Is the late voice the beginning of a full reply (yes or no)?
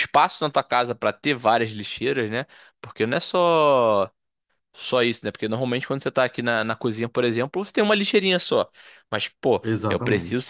no